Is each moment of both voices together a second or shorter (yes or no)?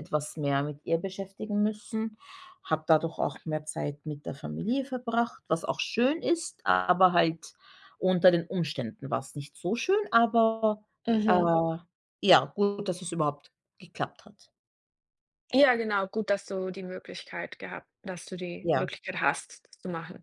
yes